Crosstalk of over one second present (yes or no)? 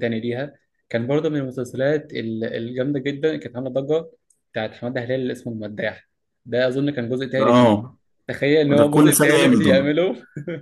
yes